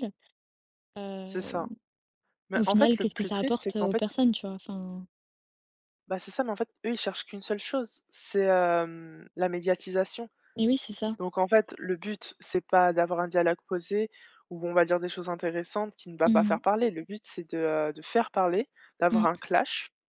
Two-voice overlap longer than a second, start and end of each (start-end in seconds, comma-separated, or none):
2.5-4.1